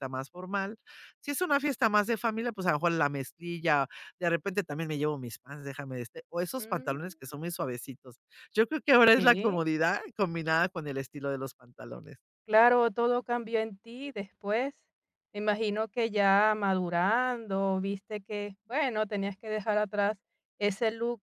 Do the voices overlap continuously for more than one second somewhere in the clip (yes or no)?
no